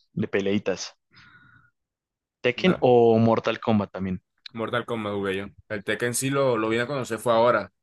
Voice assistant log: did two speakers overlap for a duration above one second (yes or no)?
no